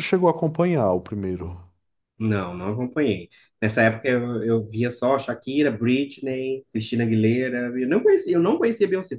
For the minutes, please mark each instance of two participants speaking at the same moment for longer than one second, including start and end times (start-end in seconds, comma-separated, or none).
none